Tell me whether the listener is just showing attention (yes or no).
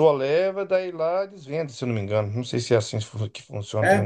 no